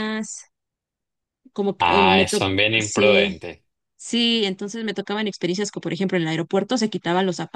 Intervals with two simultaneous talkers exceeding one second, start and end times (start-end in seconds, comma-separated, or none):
1.8-3.4